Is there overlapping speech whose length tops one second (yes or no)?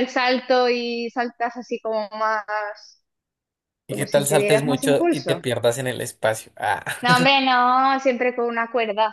yes